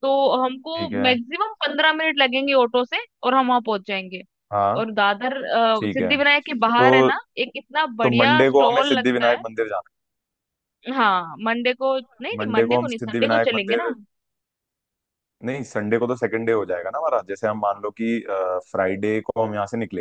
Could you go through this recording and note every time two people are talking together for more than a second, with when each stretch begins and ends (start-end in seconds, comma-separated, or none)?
8.0-9.4, 12.0-13.9